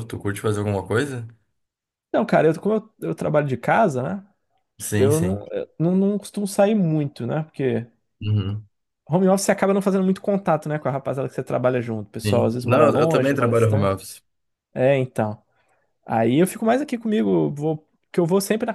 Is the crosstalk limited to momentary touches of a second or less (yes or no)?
no